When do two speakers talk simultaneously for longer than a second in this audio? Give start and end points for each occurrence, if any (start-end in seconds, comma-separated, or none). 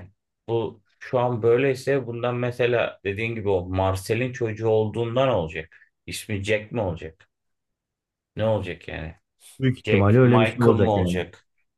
9.8-11.2